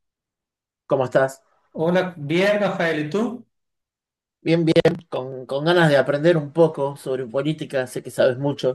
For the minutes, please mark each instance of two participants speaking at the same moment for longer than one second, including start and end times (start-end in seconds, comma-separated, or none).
none